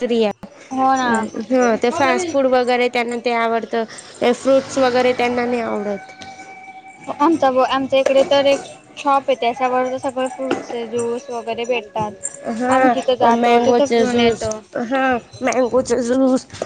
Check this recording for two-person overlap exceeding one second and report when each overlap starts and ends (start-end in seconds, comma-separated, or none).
12.6-14.5